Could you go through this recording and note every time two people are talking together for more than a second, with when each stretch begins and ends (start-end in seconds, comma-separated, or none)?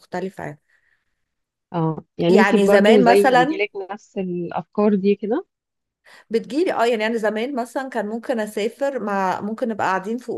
2.3-3.6